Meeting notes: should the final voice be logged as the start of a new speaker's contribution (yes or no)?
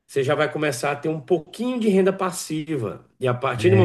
no